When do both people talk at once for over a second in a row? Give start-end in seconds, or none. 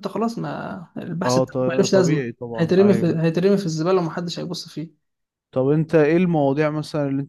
1.2-3.1